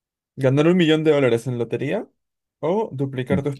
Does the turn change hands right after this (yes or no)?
no